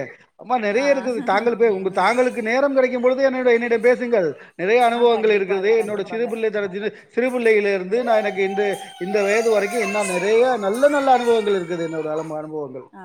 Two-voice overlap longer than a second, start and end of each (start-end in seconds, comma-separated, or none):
5.0-6.3